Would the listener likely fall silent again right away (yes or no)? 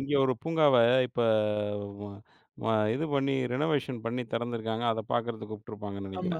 no